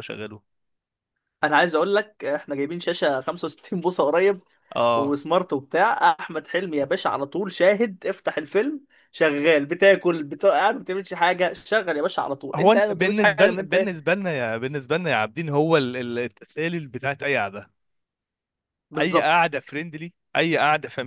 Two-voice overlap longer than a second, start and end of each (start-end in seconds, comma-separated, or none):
12.6-13.9